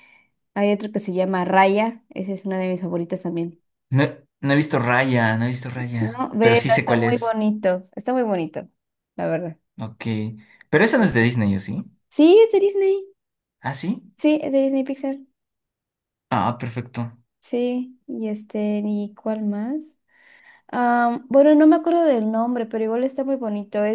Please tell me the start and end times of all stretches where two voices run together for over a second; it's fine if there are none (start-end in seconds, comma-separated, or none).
6.0-7.4